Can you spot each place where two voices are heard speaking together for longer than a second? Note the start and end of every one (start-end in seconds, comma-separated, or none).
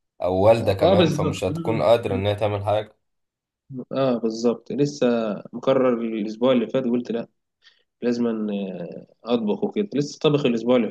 0.8-2.2